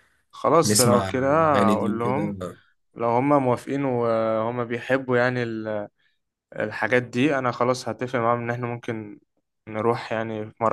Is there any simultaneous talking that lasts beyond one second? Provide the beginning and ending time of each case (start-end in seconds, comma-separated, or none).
0.6-2.4